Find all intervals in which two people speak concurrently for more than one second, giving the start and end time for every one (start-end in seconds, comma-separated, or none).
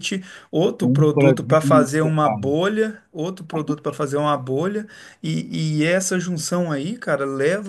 0.8-2.5